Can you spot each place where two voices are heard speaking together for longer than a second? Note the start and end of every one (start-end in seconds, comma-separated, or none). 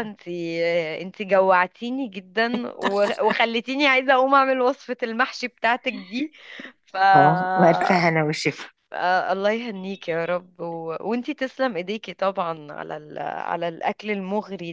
none